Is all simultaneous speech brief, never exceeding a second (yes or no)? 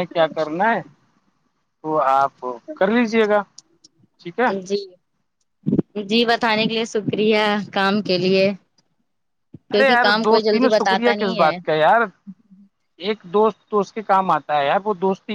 no